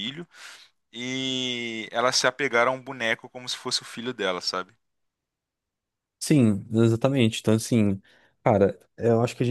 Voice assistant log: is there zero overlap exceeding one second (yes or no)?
yes